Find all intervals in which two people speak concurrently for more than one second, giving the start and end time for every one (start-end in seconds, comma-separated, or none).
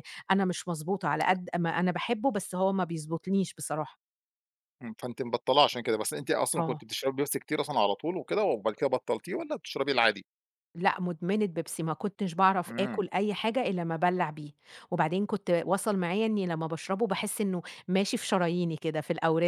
none